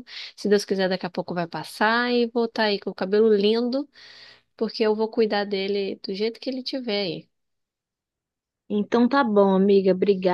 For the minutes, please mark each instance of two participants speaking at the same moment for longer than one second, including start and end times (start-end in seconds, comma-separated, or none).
none